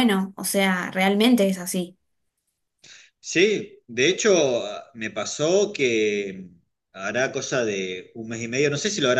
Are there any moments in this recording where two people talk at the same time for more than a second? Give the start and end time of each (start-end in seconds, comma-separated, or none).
none